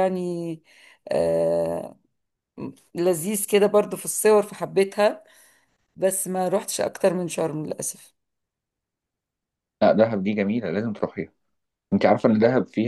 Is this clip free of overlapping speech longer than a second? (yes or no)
yes